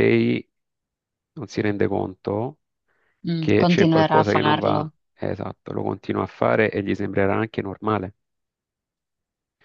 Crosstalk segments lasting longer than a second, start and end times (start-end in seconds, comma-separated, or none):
3.4-4.8